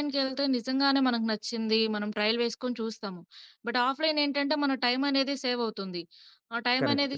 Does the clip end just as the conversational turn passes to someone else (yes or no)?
no